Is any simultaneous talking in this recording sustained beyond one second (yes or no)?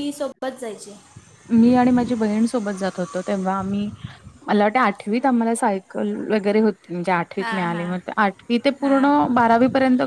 no